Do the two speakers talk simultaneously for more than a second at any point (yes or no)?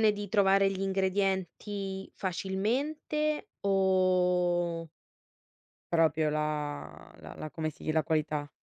no